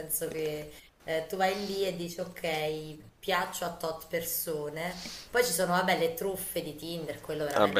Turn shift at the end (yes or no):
yes